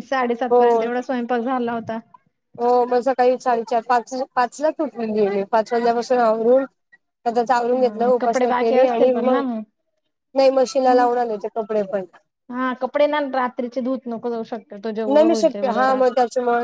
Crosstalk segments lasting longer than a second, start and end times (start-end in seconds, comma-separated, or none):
7.7-9.4